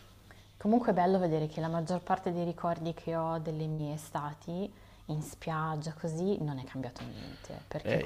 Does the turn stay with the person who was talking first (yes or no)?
no